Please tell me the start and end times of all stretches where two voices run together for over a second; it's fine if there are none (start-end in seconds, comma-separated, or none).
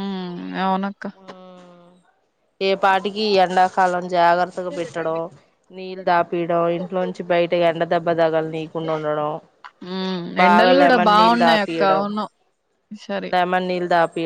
10.4-12.0